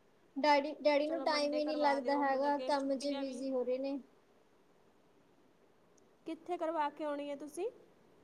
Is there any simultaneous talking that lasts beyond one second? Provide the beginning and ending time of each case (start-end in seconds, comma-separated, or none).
1.1-3.4